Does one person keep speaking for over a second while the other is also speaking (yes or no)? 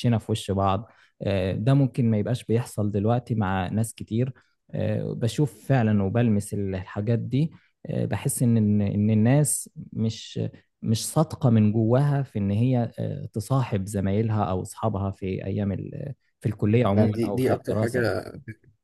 yes